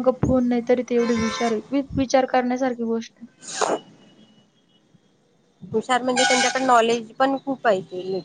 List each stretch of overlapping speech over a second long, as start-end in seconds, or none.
none